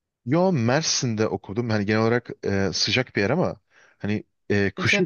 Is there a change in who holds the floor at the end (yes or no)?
no